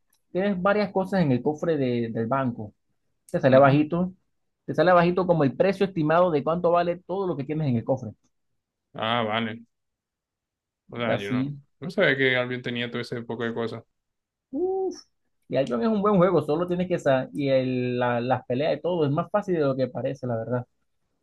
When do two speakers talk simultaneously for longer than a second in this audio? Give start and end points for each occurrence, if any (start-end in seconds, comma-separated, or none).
none